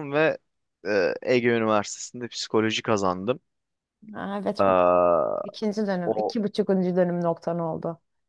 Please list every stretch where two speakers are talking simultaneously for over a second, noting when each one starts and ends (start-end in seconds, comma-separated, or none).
none